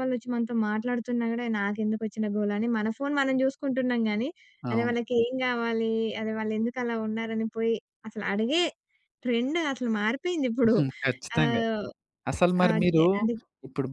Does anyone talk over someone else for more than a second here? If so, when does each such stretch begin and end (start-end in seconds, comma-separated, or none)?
none